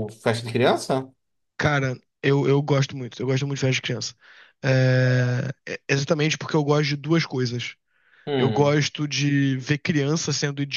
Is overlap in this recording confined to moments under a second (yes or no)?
yes